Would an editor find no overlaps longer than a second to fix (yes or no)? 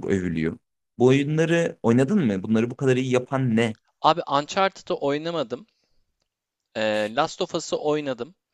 yes